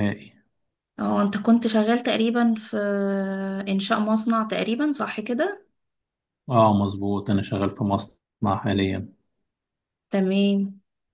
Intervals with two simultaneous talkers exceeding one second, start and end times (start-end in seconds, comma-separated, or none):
none